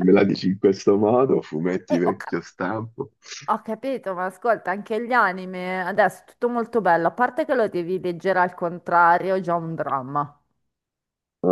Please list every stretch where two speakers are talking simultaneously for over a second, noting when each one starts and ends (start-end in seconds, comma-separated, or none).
none